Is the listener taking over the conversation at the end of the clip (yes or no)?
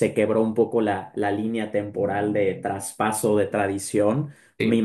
no